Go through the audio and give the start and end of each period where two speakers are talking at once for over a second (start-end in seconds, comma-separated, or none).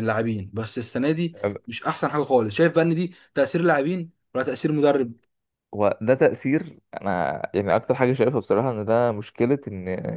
none